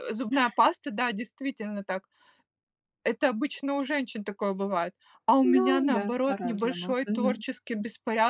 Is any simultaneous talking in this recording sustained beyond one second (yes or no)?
yes